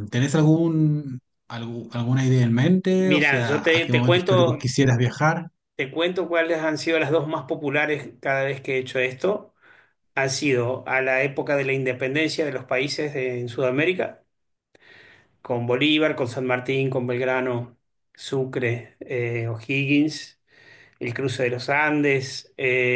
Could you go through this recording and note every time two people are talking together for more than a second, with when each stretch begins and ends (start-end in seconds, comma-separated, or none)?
3.0-4.7